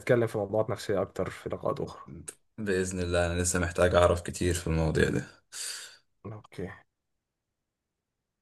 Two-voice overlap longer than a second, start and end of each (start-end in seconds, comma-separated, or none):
none